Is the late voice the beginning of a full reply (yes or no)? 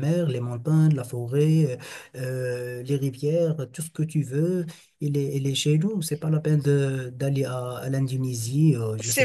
yes